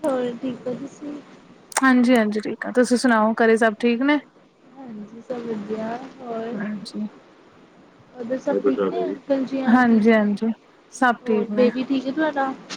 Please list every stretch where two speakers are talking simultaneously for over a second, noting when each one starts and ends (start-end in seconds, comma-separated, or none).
none